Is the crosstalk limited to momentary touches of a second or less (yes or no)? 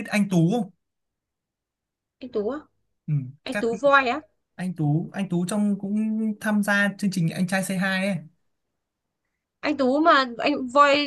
yes